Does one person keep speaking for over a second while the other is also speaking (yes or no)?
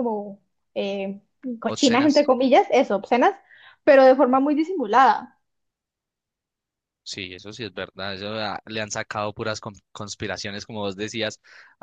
no